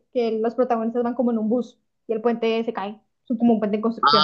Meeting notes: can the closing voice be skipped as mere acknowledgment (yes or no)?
no